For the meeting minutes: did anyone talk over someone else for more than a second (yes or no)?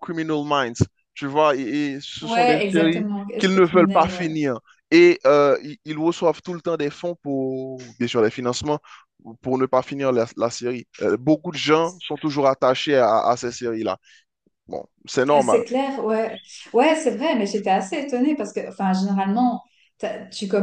yes